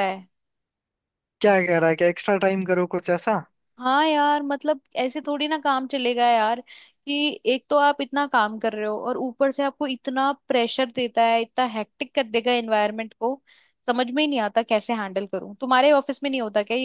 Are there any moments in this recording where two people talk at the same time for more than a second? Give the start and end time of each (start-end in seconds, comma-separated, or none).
none